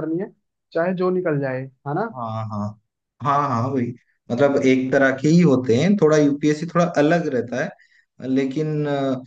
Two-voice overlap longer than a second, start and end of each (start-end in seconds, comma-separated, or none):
none